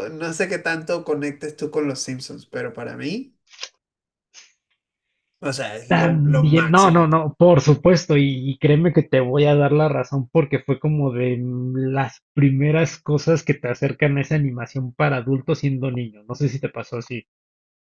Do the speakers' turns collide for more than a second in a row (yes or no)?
yes